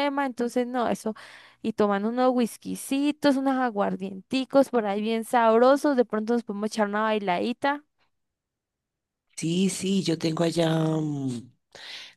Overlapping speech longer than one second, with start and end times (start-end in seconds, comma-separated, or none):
none